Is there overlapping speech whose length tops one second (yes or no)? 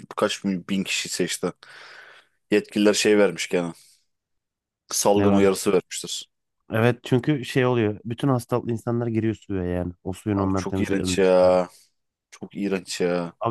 yes